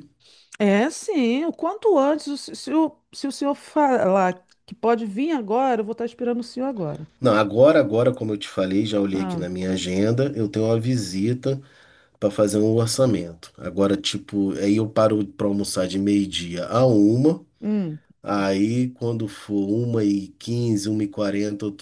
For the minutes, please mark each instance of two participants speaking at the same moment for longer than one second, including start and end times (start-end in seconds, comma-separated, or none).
none